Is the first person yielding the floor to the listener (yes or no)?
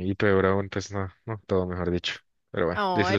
yes